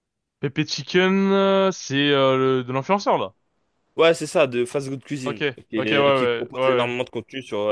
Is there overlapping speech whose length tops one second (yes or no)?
yes